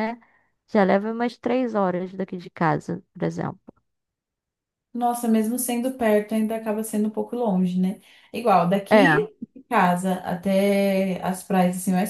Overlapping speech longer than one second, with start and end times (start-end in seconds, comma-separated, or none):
none